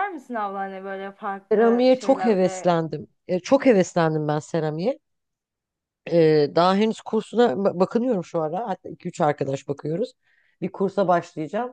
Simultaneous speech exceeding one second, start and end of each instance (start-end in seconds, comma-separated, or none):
1.5-2.7